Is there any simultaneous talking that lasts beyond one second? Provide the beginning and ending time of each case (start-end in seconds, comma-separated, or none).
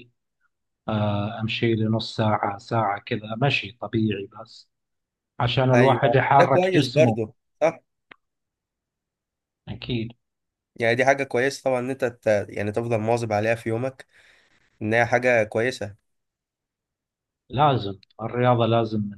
5.7-7.2